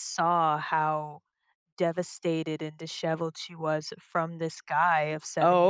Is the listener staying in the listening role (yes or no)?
yes